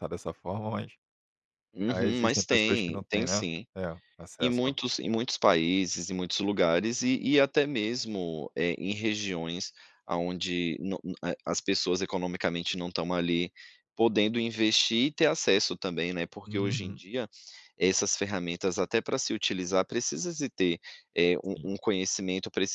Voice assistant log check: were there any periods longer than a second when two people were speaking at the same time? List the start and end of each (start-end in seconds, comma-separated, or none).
1.9-3.7